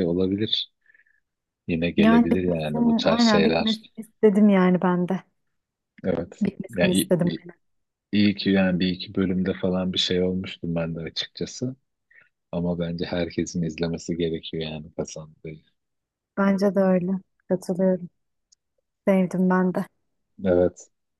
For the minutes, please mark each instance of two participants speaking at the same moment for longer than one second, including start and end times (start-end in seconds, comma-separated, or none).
2.0-3.8